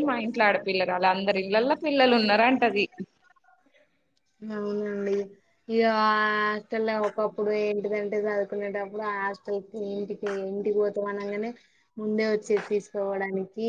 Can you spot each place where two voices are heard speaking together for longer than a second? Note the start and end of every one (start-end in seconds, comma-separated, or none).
none